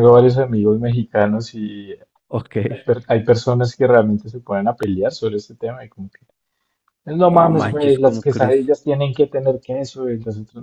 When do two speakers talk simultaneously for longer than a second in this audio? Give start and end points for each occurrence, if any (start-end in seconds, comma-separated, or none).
7.2-8.7